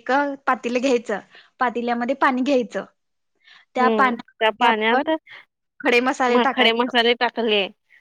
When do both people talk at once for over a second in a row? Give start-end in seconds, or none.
3.8-5.1